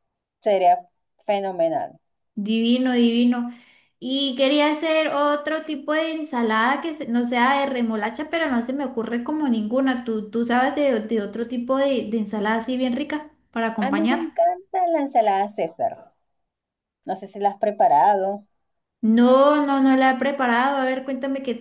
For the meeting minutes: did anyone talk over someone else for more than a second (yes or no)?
no